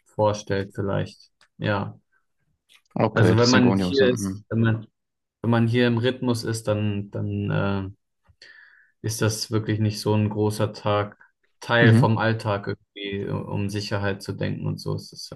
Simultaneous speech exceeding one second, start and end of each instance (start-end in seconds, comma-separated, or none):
3.1-4.4